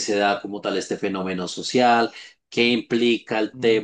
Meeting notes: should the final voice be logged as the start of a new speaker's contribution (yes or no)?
no